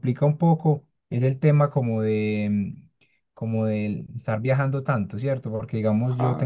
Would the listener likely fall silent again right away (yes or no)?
yes